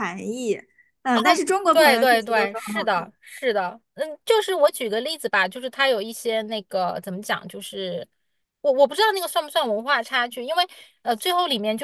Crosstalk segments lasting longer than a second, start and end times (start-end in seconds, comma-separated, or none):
1.7-2.9